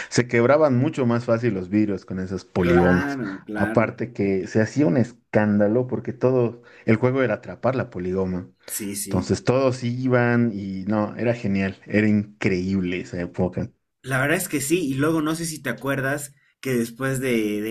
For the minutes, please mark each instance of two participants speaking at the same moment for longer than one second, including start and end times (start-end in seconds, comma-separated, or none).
2.5-3.9